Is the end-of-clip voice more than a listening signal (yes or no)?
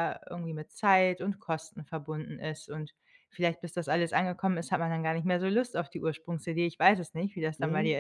yes